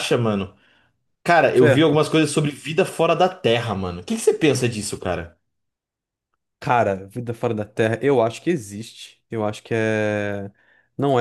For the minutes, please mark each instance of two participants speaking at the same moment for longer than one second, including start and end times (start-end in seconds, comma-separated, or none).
none